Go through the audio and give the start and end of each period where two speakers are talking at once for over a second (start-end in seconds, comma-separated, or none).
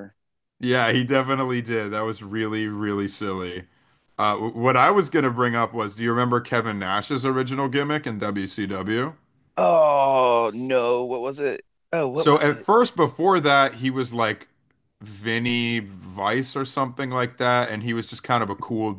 none